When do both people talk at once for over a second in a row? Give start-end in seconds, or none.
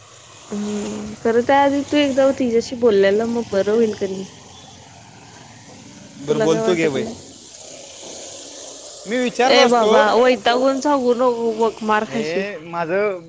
none